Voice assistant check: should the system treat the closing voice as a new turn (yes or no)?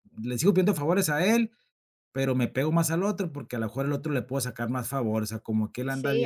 yes